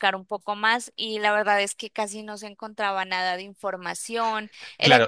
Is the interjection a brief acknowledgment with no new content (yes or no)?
no